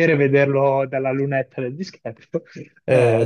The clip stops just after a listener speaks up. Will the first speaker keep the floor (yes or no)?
yes